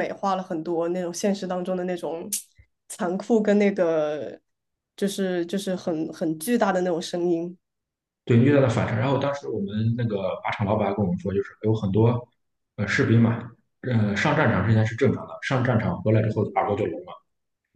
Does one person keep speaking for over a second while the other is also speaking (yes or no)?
no